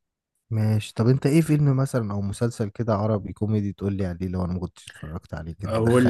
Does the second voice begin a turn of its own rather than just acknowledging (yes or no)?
yes